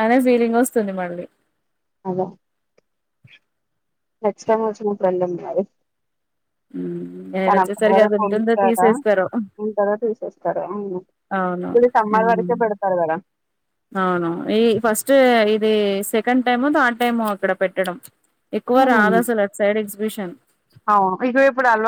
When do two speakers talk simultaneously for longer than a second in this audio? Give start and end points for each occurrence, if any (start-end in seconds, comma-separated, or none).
7.5-8.9